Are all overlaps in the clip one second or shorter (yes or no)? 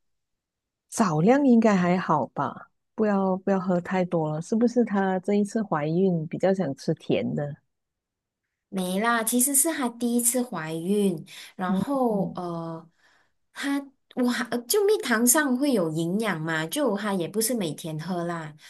yes